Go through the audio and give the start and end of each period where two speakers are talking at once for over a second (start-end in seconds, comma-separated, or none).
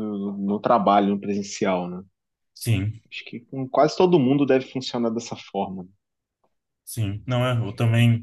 none